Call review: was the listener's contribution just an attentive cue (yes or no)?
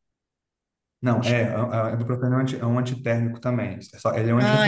no